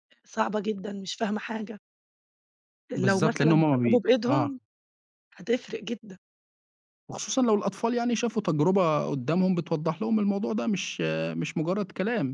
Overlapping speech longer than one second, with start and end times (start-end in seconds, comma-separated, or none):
2.9-4.5